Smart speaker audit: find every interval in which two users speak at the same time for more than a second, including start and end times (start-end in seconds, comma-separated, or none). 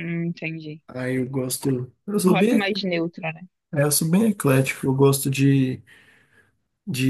none